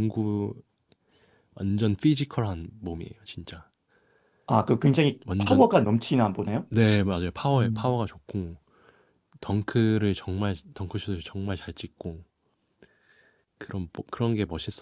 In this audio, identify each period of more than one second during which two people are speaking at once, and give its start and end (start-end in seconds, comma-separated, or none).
none